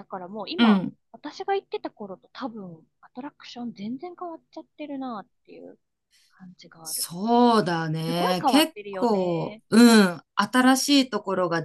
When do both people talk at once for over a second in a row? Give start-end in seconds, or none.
8.0-9.6